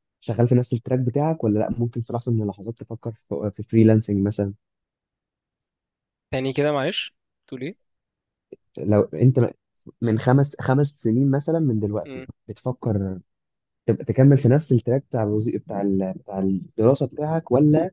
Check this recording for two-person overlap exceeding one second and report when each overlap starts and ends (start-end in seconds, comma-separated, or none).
none